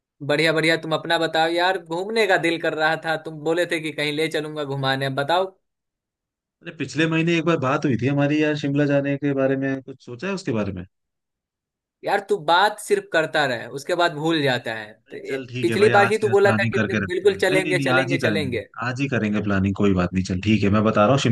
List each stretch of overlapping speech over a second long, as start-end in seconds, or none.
15.1-18.7